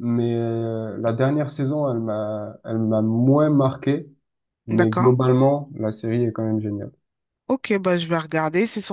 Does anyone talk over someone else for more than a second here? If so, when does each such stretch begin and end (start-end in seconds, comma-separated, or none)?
none